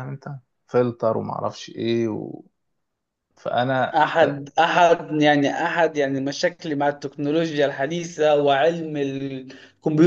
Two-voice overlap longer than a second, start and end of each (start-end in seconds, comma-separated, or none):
none